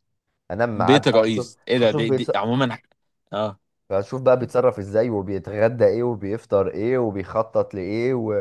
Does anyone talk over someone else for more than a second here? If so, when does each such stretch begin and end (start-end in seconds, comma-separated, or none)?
0.8-2.4